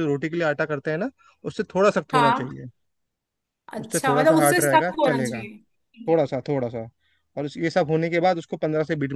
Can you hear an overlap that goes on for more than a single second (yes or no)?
yes